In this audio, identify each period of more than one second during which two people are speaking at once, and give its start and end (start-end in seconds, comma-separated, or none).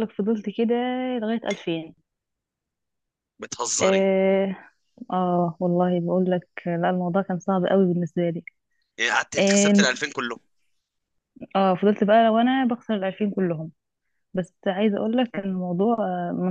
none